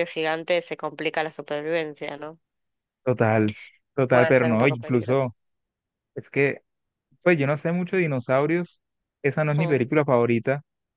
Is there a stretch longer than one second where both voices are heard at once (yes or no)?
yes